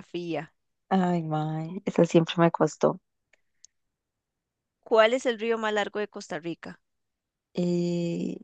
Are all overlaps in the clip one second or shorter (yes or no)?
yes